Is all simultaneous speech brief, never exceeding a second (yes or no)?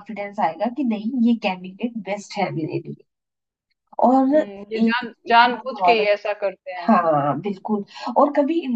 no